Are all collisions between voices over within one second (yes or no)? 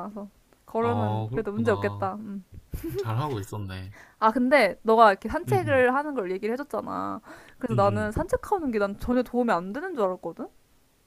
no